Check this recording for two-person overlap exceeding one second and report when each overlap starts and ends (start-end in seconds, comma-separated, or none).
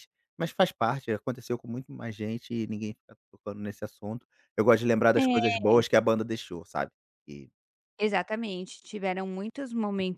none